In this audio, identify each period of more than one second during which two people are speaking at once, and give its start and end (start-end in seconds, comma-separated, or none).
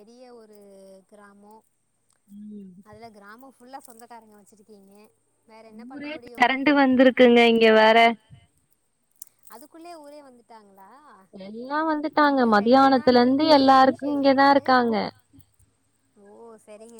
12.9-14.7